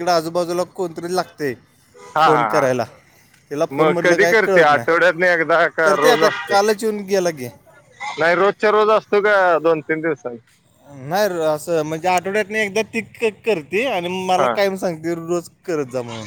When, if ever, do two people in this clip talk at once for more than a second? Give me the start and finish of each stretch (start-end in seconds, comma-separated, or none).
3.8-6.5